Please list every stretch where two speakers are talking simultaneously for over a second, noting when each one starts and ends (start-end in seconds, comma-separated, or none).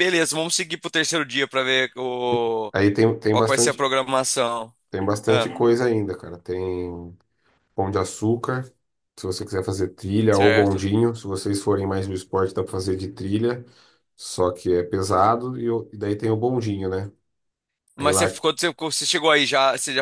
none